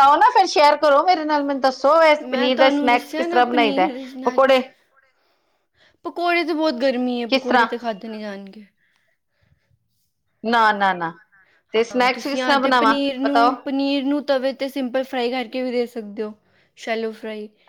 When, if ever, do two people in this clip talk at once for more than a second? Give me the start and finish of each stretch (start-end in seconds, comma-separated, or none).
2.2-4.6